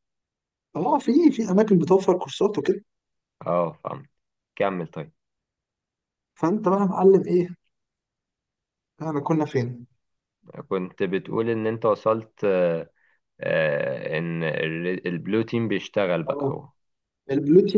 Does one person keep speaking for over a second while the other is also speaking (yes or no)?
no